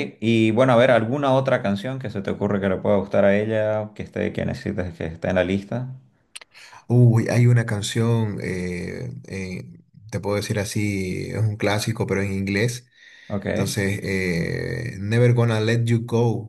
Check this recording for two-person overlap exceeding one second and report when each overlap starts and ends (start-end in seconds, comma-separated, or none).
none